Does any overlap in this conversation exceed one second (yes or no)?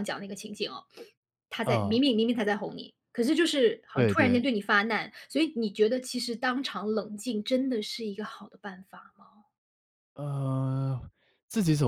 no